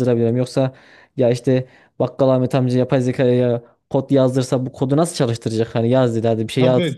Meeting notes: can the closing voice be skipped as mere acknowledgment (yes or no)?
no